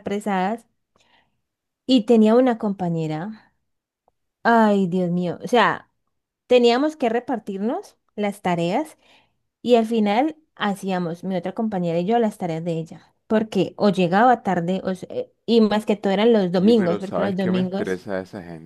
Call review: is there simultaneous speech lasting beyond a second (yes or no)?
yes